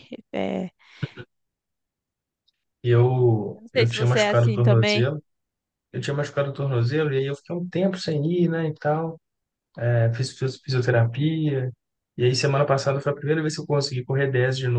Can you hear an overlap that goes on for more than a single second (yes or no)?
yes